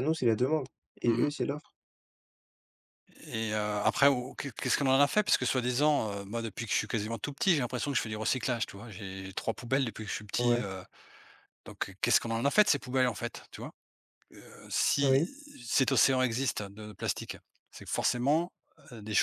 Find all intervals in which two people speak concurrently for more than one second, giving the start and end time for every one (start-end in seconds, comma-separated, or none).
none